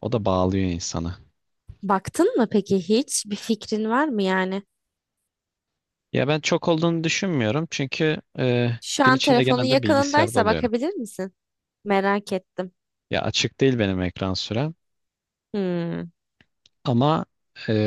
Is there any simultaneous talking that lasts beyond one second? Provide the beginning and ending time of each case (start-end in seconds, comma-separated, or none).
8.8-10.7